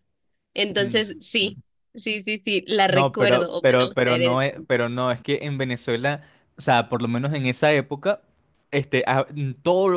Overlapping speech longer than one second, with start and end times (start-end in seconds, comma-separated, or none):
2.9-4.4